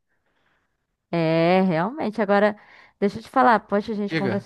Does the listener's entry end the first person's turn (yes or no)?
no